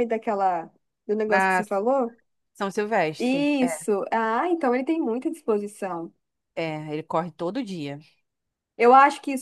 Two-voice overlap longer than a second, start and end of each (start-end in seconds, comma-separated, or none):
none